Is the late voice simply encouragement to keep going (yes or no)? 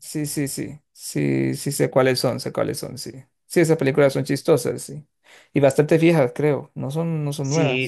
no